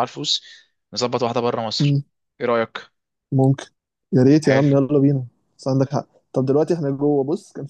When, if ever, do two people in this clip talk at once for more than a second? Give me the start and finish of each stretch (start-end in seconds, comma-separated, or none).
none